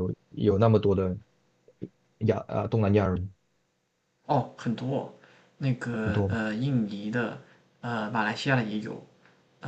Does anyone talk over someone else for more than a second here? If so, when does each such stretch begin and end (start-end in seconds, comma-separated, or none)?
none